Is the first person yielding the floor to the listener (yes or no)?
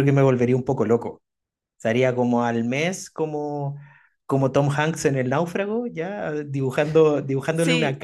no